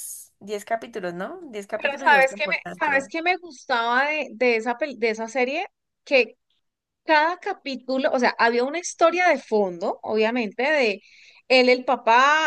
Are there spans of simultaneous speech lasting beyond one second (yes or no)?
yes